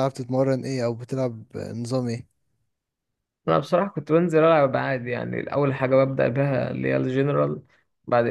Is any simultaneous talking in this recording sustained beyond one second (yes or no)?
no